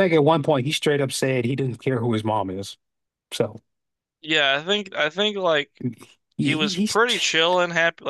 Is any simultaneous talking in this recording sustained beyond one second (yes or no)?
no